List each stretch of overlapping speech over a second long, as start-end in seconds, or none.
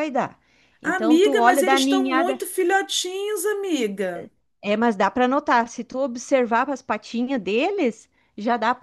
0.8-2.4